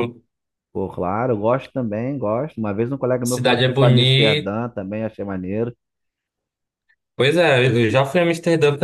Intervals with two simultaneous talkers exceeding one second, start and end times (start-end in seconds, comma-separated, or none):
3.3-4.5